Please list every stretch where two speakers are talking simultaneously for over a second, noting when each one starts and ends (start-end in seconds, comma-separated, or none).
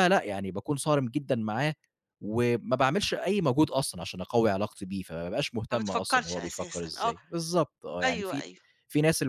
5.7-7.1